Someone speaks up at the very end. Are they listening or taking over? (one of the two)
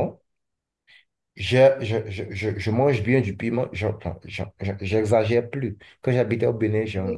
listening